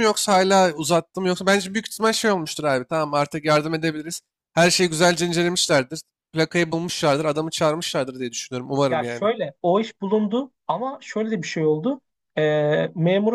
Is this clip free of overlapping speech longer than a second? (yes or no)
yes